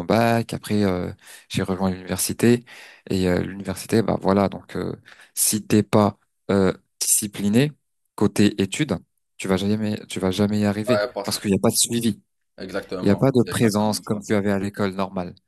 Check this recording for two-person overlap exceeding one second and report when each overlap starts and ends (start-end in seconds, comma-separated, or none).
13.0-14.2